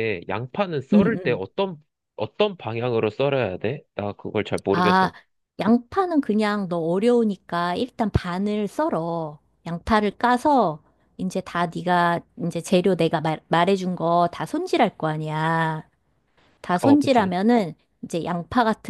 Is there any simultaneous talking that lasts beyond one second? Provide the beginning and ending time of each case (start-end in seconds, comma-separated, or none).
none